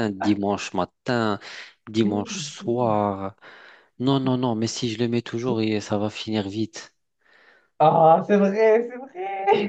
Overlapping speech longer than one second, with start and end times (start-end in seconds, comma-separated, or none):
none